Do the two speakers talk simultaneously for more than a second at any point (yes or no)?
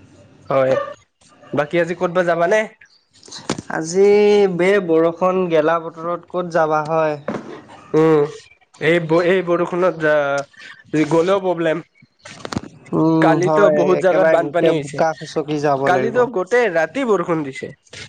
yes